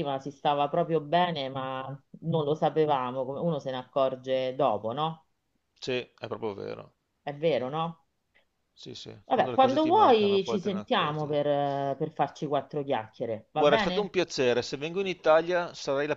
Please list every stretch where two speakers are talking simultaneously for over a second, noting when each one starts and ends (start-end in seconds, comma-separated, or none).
9.2-11.3